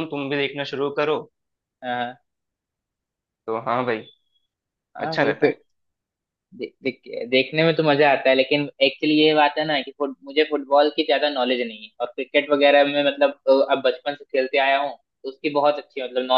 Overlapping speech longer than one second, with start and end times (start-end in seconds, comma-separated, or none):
none